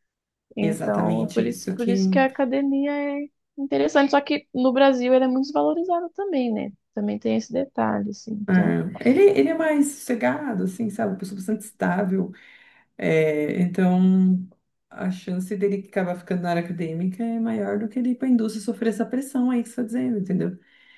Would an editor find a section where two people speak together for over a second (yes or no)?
yes